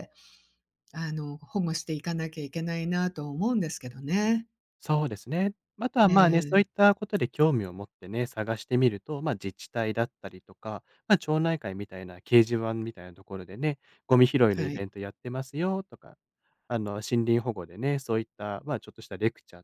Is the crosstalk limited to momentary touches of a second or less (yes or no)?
yes